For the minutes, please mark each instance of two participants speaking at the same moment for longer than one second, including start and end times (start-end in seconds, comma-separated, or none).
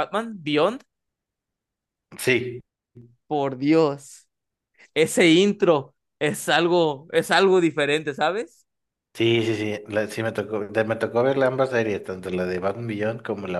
none